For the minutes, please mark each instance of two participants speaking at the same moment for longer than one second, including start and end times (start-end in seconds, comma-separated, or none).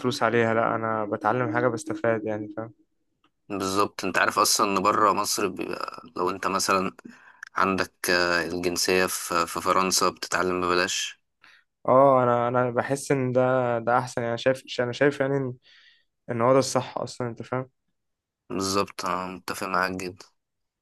none